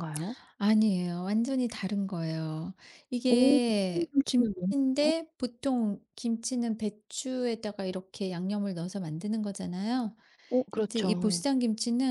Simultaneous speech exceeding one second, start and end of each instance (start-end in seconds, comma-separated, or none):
3.3-5.1